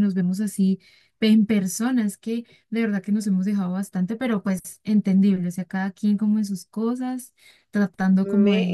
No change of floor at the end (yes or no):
yes